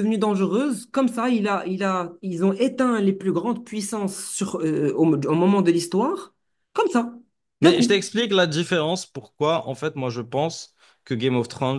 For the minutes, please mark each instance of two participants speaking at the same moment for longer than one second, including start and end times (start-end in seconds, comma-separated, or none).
none